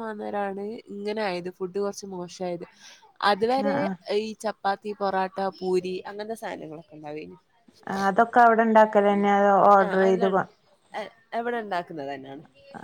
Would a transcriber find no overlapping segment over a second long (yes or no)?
yes